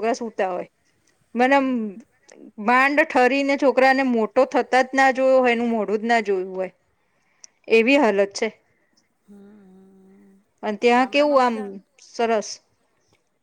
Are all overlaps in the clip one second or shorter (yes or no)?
yes